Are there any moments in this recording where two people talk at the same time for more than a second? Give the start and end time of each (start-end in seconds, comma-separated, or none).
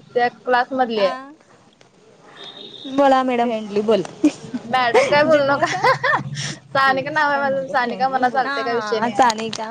6.8-8.3